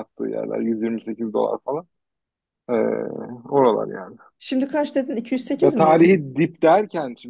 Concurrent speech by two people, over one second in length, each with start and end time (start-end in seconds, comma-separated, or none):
none